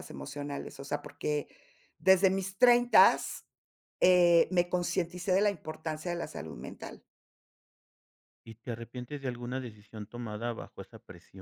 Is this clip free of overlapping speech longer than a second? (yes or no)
yes